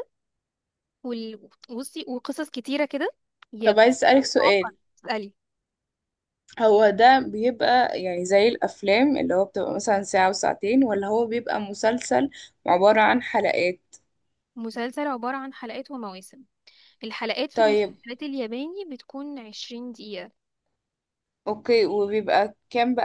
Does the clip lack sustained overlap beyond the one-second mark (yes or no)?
yes